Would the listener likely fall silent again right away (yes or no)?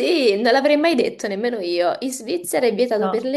yes